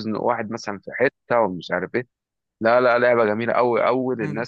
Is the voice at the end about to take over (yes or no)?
no